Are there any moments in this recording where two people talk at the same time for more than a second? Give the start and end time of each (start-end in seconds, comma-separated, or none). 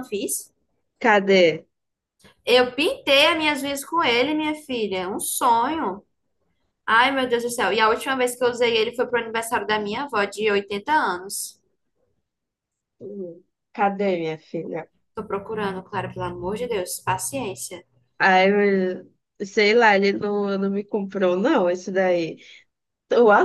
none